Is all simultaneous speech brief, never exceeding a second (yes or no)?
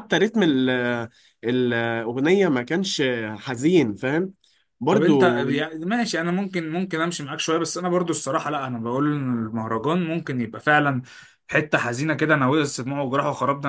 yes